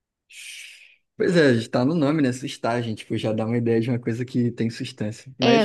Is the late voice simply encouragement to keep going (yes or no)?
yes